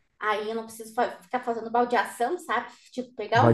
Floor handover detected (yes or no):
no